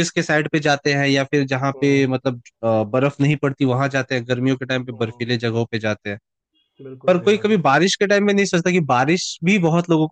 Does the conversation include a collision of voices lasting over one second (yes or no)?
no